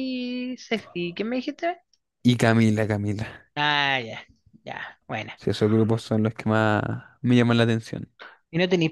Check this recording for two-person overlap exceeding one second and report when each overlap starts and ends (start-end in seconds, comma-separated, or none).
none